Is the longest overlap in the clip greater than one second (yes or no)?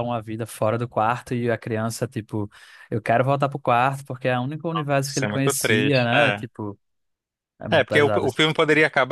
yes